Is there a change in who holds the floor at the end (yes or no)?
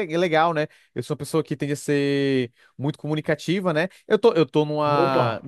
no